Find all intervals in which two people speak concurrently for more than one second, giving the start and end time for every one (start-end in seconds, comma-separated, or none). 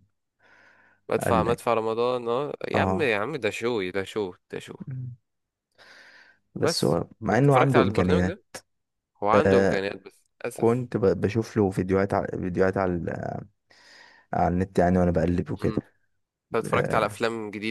6.6-8.4